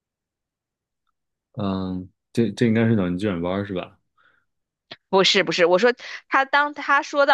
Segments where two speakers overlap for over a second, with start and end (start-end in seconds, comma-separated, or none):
none